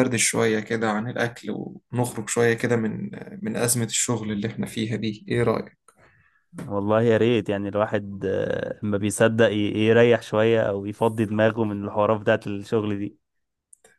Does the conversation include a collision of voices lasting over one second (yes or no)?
no